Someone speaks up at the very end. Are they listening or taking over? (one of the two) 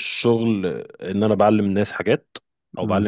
listening